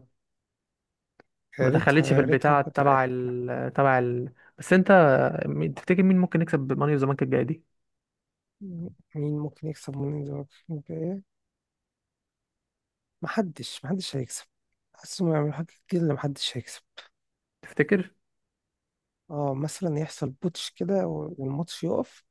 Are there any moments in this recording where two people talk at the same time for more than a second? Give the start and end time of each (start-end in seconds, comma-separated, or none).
1.6-3.3